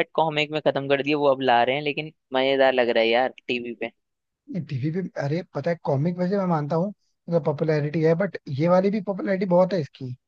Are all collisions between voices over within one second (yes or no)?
yes